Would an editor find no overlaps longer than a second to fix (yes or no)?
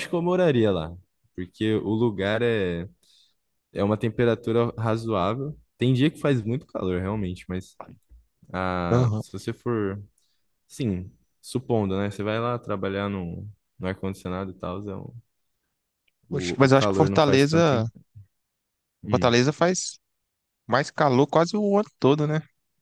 no